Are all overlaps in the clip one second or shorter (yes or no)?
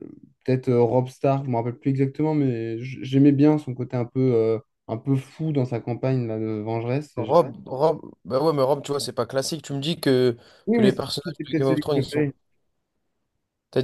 no